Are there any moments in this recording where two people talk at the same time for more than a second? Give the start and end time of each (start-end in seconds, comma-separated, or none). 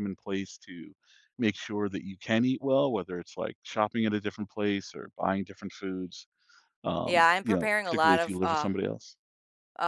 7.0-8.7